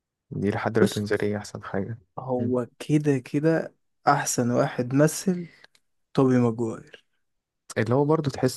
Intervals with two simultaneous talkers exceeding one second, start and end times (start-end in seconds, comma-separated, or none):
none